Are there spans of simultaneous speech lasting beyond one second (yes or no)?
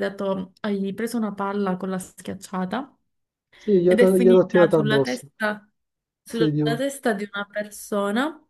yes